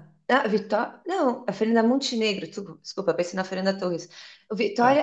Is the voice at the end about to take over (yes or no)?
no